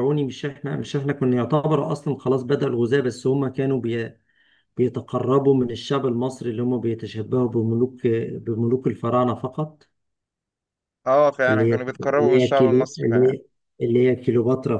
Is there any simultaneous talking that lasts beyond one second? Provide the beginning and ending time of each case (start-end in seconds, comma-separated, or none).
11.5-13.3